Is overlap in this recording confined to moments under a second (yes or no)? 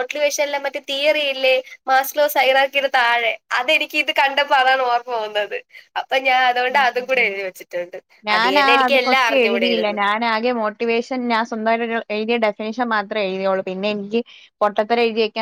no